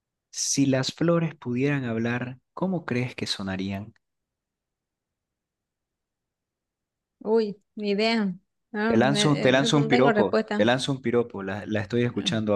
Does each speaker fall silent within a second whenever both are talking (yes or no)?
no